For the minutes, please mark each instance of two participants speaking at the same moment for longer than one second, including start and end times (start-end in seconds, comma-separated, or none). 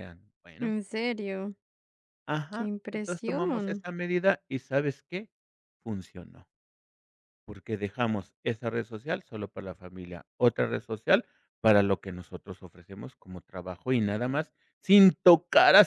2.5-3.9